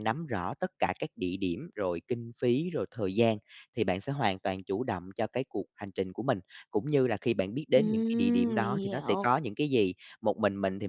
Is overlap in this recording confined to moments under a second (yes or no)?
no